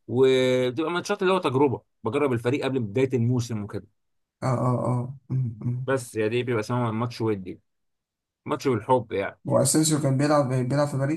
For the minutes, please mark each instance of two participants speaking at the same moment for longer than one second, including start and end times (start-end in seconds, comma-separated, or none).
none